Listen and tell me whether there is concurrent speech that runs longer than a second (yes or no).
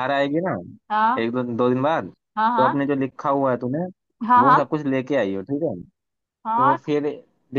no